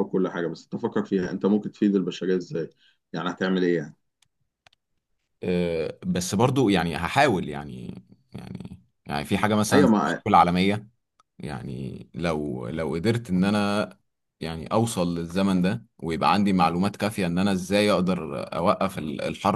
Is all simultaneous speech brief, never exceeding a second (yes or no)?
yes